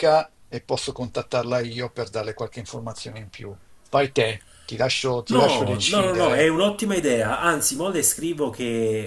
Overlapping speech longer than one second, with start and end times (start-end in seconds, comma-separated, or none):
5.3-6.5